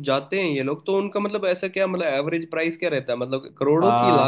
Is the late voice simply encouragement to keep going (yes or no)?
no